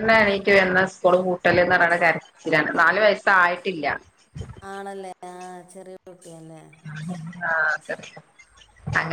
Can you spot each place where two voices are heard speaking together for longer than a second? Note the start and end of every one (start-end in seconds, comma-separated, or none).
none